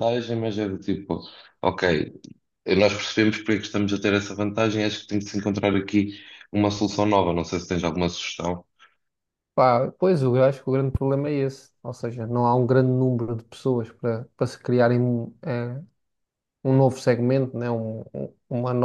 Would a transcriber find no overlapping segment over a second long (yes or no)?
yes